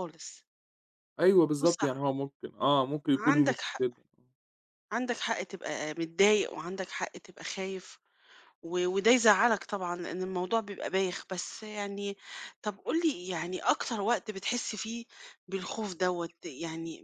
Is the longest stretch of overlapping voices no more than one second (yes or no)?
yes